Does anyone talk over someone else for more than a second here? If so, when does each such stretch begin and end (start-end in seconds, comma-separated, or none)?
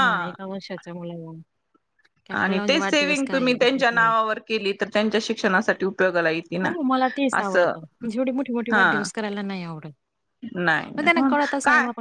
2.4-4.1